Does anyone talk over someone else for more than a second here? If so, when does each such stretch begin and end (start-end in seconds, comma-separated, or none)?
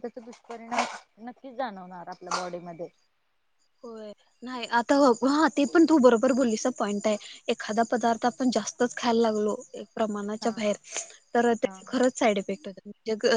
none